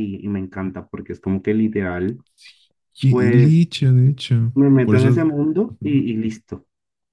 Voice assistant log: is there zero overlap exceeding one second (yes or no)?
yes